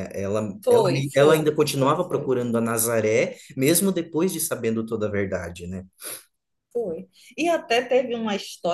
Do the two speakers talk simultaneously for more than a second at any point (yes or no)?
yes